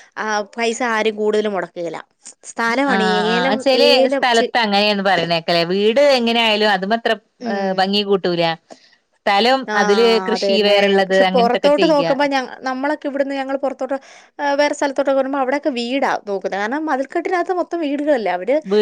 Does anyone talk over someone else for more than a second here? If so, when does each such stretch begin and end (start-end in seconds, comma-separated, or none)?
9.7-12.1